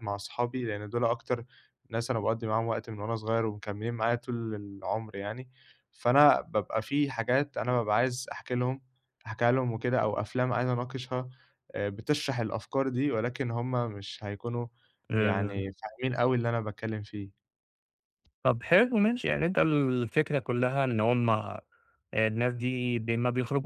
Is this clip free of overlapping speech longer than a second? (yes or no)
yes